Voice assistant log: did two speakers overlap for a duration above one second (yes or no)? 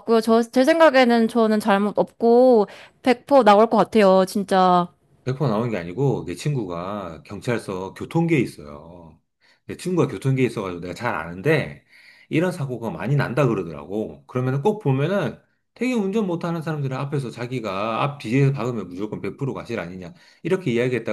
no